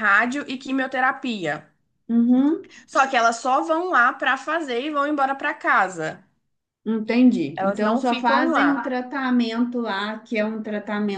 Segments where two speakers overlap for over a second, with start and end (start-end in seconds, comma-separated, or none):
7.6-8.9